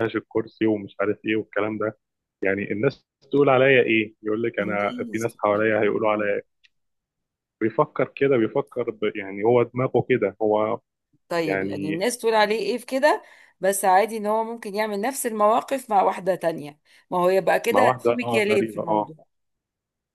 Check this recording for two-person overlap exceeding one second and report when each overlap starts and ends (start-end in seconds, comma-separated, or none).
4.6-6.3, 17.7-19.1